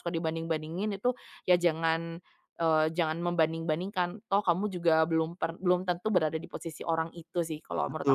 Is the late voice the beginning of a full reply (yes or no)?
yes